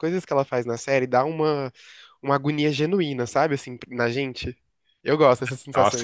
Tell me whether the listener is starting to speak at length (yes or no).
yes